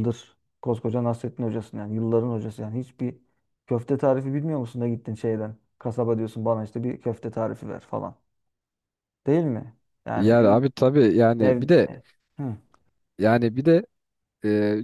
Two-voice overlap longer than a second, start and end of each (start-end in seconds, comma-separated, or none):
none